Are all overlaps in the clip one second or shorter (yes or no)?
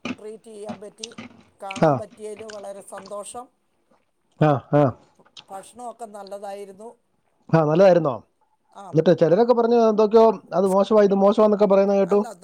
yes